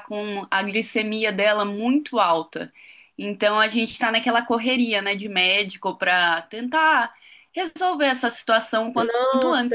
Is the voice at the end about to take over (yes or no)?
yes